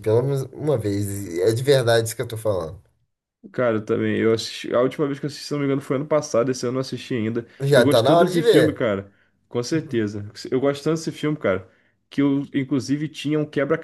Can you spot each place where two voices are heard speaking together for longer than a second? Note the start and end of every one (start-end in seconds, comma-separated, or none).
7.6-8.8